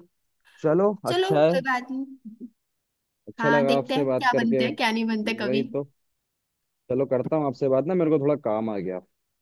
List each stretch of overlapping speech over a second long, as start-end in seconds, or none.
3.4-4.6